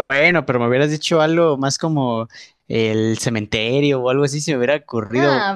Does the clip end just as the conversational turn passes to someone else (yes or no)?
yes